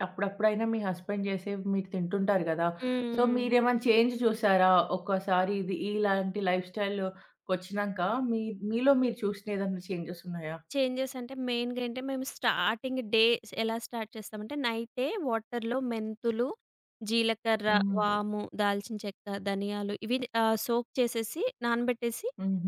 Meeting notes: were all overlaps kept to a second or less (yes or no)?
yes